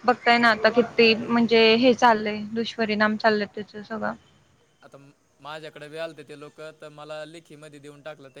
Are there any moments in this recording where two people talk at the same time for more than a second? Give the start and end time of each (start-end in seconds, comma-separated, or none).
none